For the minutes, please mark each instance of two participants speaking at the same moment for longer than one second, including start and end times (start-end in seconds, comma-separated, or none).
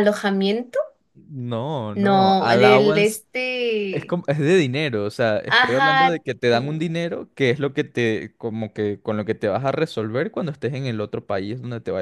1.9-3.2, 5.5-7.0